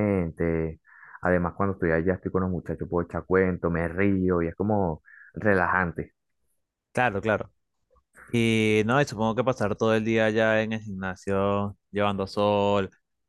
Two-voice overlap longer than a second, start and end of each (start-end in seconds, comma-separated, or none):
none